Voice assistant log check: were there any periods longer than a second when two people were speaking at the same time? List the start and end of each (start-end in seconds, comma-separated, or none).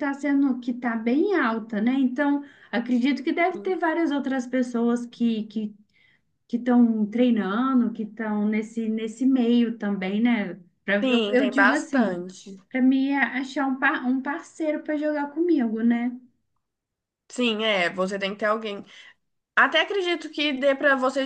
11.0-12.2